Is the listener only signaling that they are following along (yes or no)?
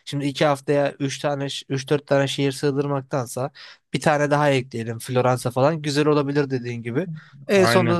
yes